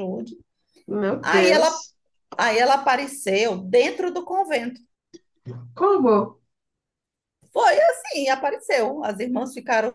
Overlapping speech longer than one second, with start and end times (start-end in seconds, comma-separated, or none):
none